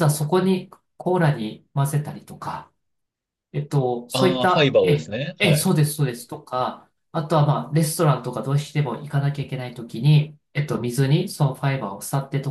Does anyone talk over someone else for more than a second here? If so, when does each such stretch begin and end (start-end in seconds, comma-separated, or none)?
4.1-5.8